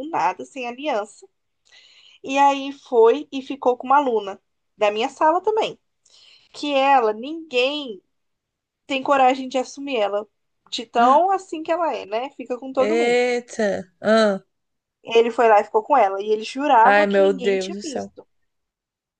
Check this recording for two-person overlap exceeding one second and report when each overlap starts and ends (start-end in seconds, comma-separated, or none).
16.8-18.1